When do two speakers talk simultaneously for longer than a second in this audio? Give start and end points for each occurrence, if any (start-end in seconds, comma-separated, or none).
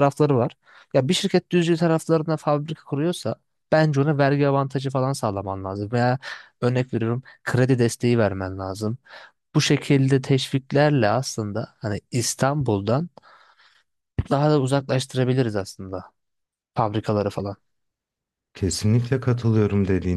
none